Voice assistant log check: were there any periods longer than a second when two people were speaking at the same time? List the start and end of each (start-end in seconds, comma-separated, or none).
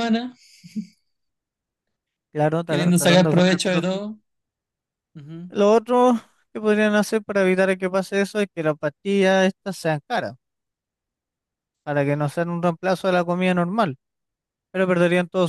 2.6-4.0